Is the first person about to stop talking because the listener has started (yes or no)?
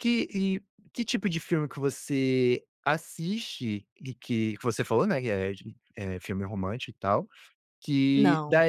no